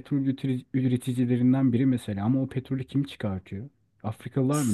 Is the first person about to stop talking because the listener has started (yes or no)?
yes